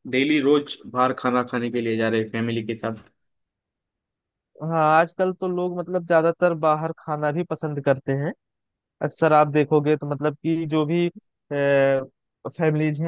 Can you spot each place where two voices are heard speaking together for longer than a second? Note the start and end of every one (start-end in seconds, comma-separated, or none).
none